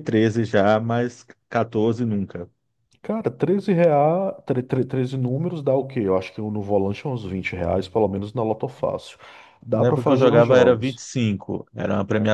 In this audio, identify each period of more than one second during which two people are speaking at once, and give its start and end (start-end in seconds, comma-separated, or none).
9.7-11.0